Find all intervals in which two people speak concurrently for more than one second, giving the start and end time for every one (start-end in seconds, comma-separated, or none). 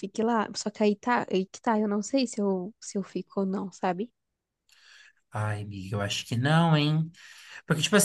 none